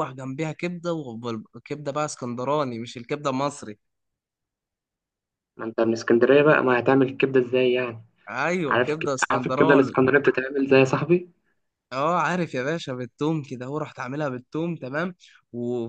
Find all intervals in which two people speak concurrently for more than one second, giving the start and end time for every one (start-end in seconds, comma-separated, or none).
8.7-10.0